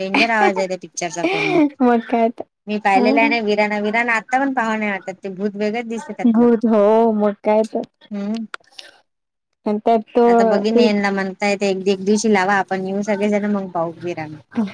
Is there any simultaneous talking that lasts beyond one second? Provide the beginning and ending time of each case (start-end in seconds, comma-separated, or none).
none